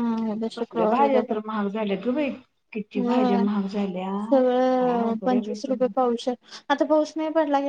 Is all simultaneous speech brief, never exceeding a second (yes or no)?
no